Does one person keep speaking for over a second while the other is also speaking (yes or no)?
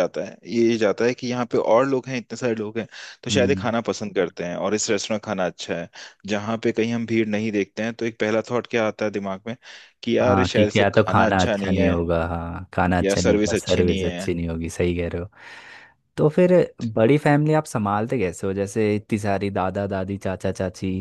yes